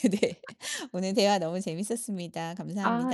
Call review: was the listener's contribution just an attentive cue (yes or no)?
no